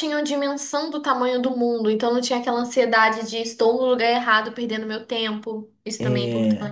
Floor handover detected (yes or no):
yes